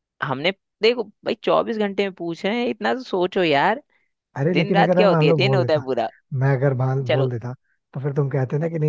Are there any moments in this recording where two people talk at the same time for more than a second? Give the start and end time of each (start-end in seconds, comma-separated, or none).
4.5-5.8